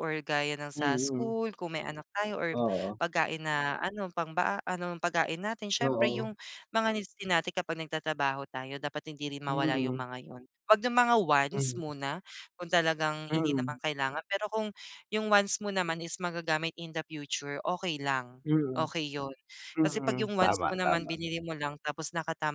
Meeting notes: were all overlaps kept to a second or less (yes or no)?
no